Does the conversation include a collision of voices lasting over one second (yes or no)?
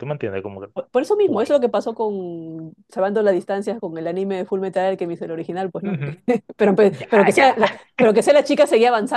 no